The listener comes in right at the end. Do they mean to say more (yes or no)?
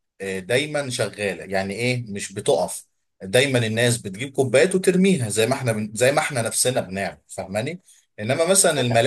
no